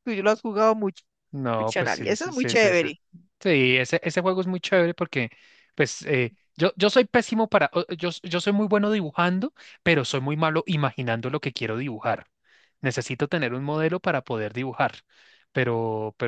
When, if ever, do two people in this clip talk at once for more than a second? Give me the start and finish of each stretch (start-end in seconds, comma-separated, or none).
1.6-2.9